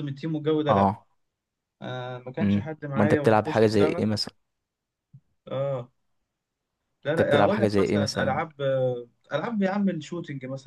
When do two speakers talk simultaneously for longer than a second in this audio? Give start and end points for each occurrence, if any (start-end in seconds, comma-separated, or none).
2.4-4.0, 7.1-8.4